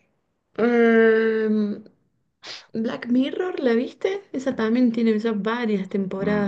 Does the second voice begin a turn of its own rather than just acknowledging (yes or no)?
yes